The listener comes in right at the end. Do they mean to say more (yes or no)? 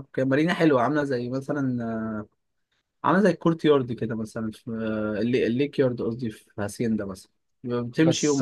yes